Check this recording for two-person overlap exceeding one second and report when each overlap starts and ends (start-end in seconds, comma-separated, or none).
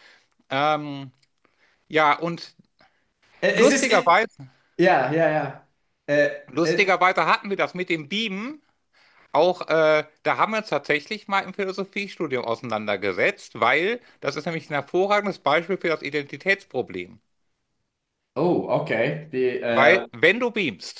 none